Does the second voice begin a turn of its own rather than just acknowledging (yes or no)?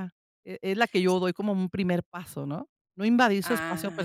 yes